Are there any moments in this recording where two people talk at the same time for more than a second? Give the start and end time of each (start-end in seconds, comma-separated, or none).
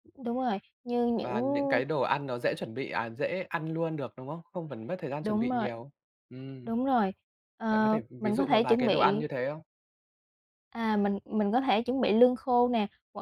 7.7-9.2